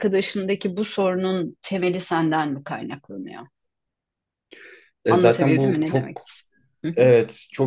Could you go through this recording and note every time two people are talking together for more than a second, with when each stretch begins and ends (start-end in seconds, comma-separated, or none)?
5.1-6.3